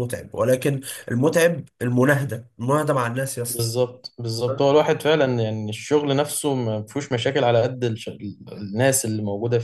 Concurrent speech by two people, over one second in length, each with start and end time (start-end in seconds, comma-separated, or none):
none